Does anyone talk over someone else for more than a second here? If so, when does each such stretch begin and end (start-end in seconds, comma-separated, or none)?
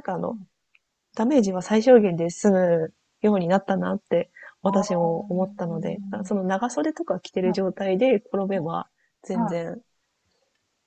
4.7-6.1